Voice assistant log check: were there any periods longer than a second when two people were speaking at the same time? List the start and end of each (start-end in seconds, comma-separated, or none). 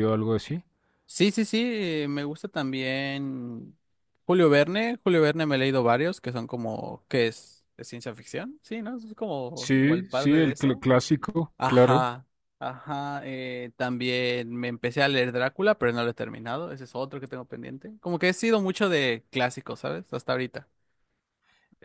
9.6-10.8